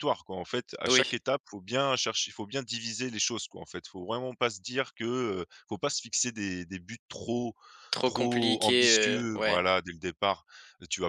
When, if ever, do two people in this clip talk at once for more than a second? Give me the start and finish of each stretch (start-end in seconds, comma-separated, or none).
8.1-9.7